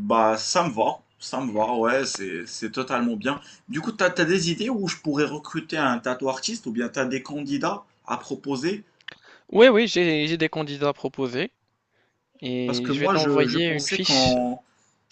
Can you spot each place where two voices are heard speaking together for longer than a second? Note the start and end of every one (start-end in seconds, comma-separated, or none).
12.6-14.4